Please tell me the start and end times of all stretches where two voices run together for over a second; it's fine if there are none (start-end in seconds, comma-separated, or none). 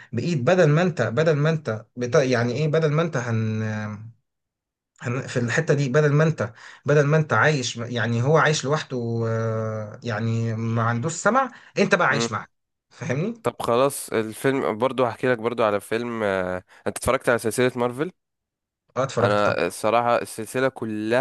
none